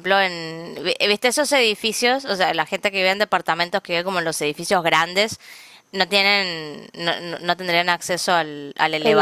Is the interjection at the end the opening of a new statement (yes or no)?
no